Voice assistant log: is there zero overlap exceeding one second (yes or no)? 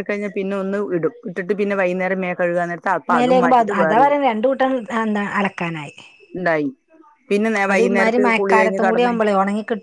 no